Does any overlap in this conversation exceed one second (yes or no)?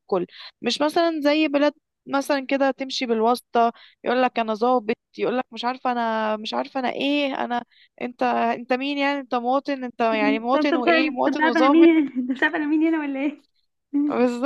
yes